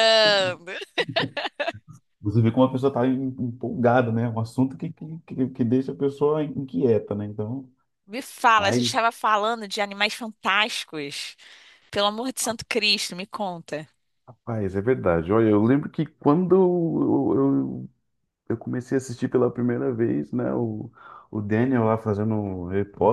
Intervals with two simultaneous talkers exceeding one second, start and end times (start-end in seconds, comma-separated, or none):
none